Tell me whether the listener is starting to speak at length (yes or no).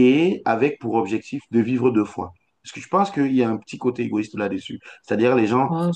no